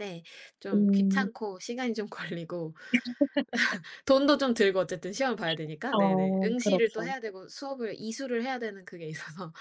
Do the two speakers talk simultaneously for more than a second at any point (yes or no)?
yes